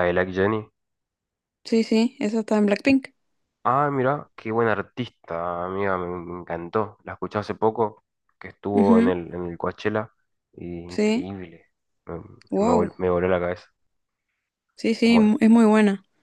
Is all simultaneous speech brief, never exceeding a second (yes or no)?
yes